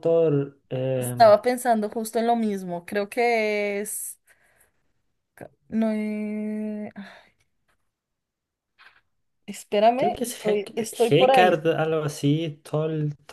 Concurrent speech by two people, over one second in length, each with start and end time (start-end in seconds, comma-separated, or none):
10.0-11.6